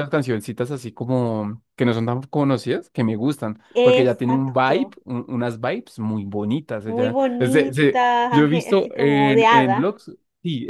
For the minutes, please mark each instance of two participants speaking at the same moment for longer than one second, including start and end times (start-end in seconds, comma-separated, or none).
3.8-5.0, 6.8-9.9